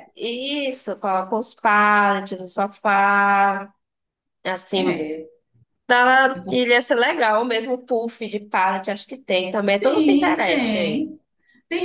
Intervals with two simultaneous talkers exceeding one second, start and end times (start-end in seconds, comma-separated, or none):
9.6-11.1